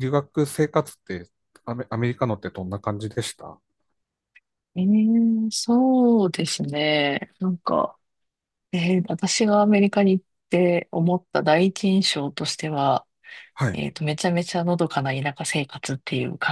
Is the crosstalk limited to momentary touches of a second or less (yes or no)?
yes